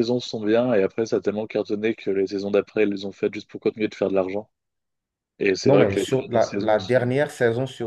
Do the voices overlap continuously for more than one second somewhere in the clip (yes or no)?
yes